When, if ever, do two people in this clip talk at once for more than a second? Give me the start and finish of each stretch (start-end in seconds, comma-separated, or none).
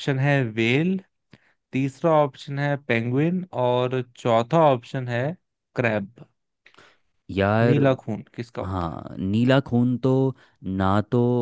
none